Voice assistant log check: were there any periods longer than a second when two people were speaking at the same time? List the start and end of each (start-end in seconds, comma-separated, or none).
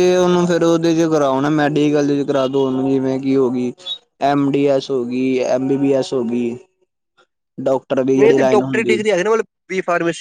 none